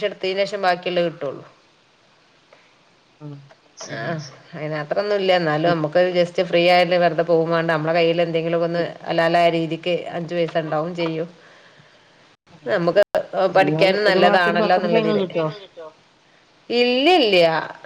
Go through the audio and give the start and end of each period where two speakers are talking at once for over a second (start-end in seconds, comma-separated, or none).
13.6-15.2